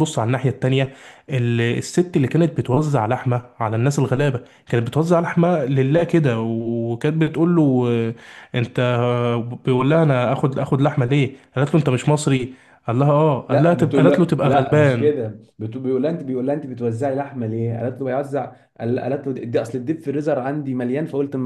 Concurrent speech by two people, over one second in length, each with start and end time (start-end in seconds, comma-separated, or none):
13.5-15.1